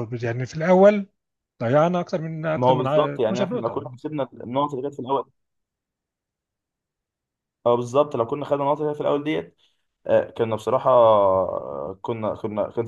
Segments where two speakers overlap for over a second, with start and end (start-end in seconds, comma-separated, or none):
2.5-4.0